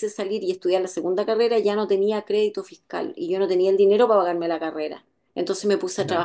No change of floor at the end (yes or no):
yes